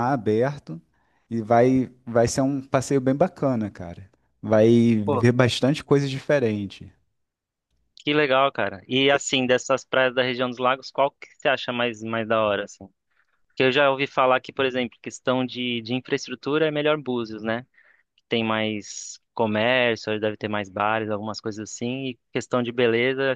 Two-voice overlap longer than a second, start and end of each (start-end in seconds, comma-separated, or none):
none